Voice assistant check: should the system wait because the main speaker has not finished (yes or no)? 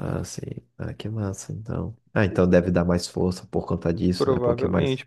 no